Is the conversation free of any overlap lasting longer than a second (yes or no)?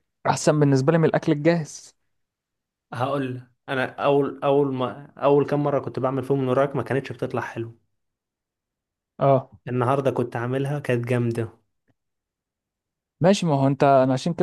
yes